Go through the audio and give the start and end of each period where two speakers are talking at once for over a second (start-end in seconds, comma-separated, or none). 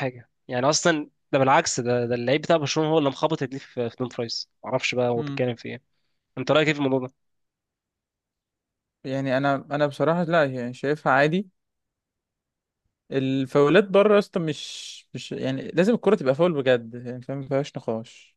none